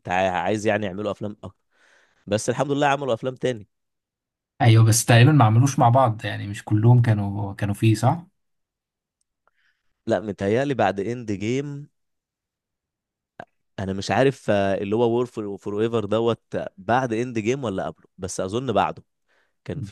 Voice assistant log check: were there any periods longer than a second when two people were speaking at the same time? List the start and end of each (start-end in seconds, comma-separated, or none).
none